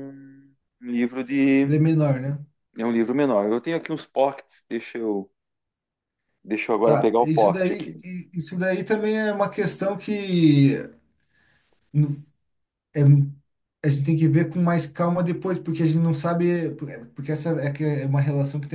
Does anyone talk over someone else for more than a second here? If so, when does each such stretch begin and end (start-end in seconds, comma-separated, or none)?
6.8-8.0